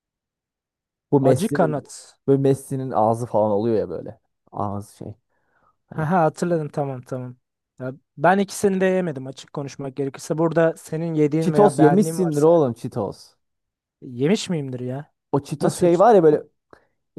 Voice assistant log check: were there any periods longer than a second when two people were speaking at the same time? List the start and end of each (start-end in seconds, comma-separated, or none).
11.4-12.6